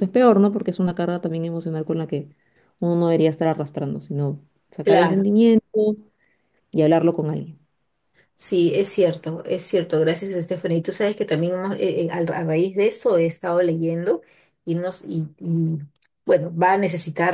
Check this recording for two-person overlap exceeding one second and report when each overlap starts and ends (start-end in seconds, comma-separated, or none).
none